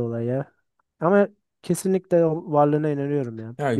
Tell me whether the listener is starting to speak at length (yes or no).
yes